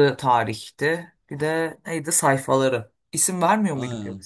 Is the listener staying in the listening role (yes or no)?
no